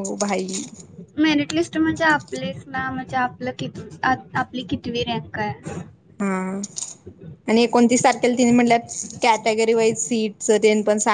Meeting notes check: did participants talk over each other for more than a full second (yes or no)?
no